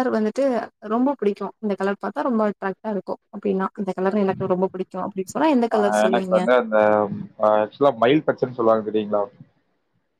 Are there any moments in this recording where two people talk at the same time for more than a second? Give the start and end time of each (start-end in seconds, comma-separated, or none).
none